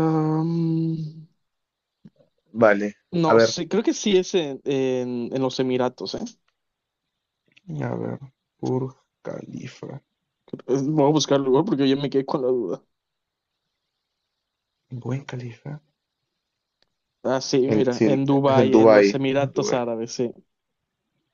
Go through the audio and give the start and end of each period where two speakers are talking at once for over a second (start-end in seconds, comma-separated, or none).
17.7-19.8